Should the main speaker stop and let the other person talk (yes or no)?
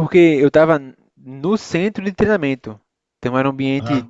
no